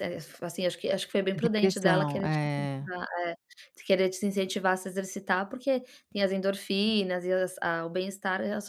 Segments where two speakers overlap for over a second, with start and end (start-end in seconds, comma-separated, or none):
1.3-2.9